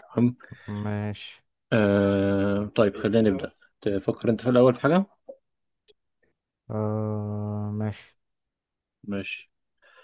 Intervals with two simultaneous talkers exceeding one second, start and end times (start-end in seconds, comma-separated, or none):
none